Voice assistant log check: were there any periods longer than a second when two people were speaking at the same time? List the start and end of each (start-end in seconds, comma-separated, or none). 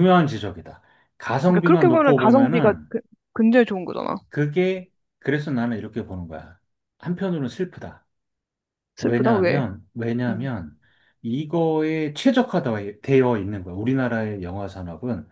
1.5-2.9